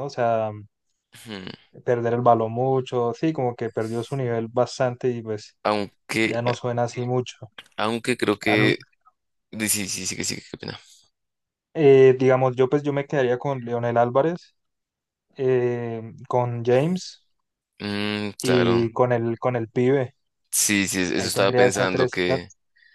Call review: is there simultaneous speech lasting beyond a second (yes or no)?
yes